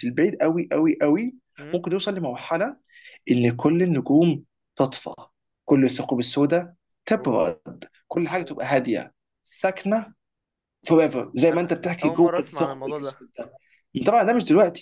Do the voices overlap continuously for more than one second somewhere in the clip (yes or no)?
yes